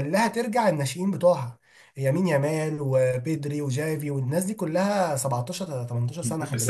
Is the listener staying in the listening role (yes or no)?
no